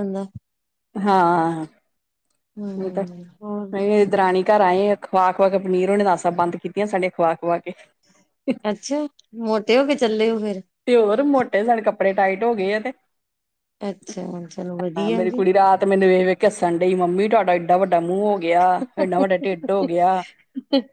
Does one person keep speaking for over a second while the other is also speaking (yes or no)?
no